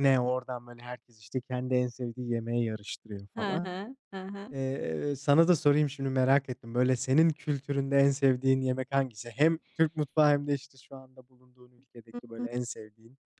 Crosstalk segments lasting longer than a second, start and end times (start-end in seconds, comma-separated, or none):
none